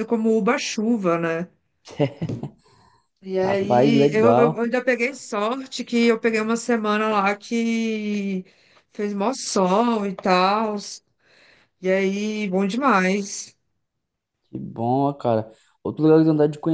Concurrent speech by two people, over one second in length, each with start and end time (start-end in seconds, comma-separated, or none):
3.4-4.6